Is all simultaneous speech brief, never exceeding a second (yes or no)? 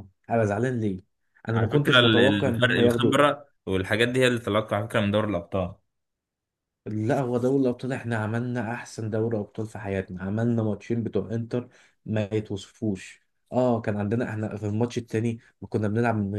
no